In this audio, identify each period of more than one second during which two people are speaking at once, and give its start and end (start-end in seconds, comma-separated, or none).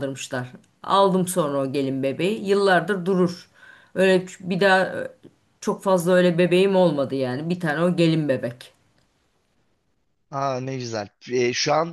none